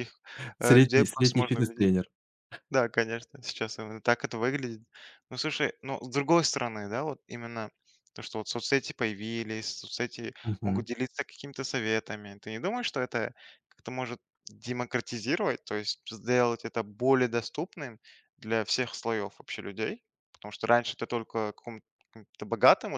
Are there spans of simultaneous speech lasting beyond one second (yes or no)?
yes